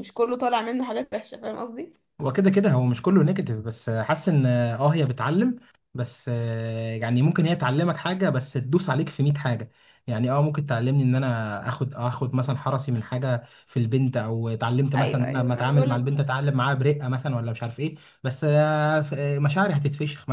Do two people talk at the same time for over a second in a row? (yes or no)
yes